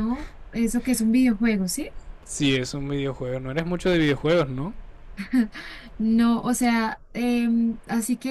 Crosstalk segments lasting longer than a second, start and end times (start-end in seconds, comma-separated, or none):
none